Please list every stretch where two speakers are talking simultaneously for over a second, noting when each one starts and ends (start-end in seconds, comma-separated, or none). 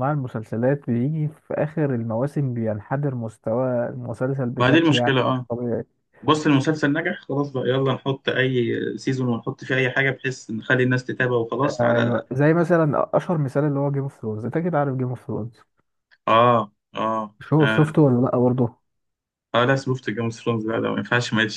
none